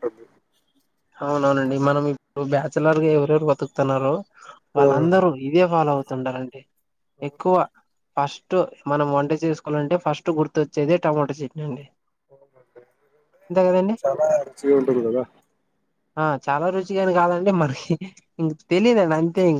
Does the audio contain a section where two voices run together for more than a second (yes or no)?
no